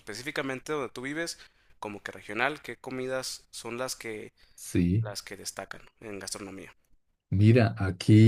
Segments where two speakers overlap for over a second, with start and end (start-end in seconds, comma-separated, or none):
none